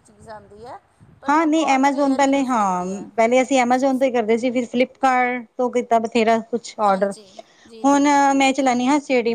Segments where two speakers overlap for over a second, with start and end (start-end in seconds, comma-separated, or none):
1.3-3.1